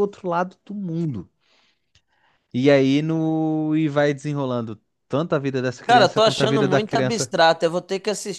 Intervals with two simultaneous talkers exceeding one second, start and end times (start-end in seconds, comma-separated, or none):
5.8-7.3